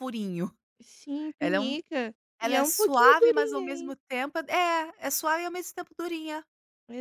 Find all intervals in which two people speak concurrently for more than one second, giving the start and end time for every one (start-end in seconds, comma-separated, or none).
2.4-4.0